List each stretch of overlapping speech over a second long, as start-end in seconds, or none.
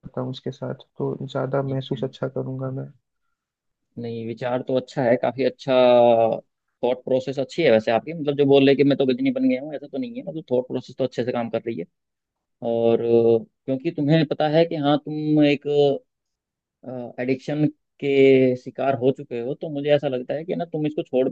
none